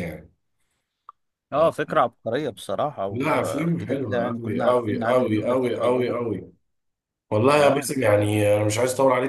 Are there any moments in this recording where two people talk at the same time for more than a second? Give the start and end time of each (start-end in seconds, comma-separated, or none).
3.1-6.2